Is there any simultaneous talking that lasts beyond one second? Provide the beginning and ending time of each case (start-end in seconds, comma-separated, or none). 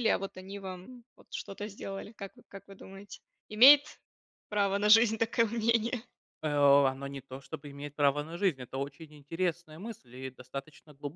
none